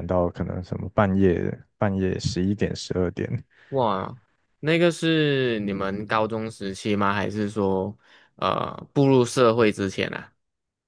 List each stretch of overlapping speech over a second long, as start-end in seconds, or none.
none